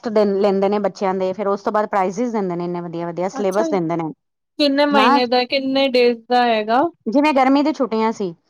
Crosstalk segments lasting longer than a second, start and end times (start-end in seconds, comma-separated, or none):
none